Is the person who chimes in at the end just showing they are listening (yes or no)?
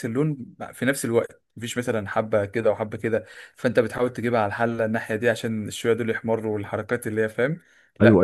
no